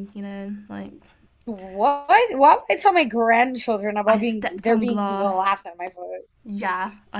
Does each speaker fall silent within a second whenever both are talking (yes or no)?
no